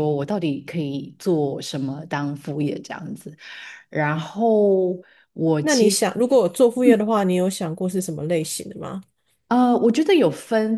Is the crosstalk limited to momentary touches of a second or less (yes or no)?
yes